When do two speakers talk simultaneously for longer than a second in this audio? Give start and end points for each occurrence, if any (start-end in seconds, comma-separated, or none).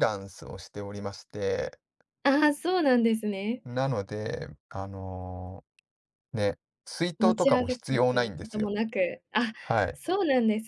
7.2-8.8